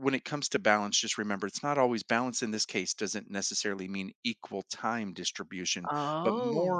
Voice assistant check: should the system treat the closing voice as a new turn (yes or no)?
no